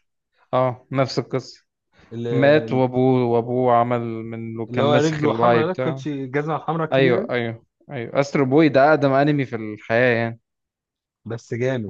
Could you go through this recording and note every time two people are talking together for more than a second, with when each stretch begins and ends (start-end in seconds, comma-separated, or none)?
4.7-6.0